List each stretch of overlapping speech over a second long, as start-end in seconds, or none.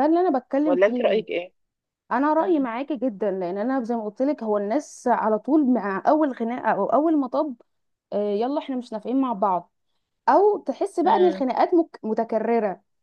none